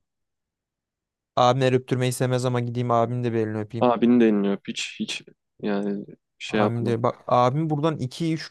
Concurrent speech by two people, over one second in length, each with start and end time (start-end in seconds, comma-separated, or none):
none